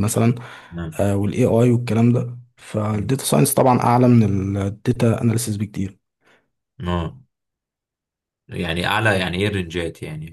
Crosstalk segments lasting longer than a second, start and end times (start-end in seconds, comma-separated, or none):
none